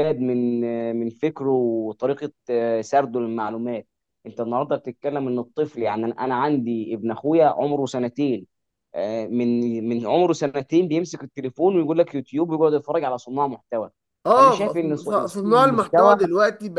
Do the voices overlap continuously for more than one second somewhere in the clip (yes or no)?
yes